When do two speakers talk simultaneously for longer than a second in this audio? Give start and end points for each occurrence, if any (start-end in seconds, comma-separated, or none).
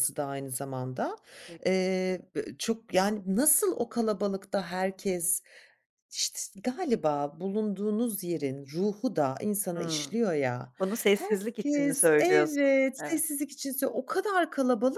11.1-13.2